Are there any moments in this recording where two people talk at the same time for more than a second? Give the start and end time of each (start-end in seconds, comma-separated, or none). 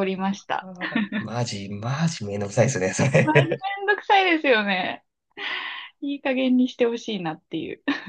none